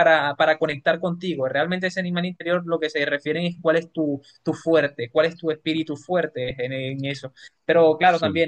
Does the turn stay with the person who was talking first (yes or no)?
yes